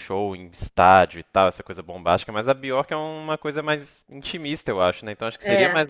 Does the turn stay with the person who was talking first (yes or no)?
yes